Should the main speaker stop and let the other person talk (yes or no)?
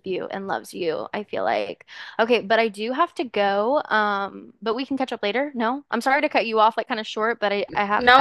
yes